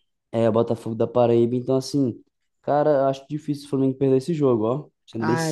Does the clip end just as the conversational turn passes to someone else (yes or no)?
yes